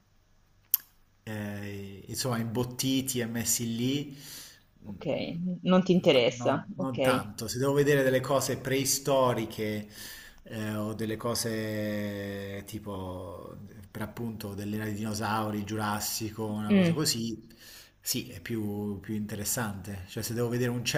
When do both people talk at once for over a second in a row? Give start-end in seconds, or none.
6.0-7.3